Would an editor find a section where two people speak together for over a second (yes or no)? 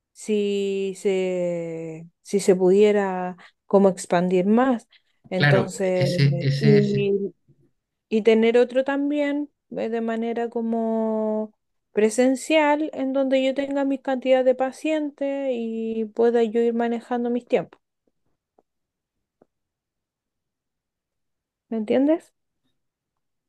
yes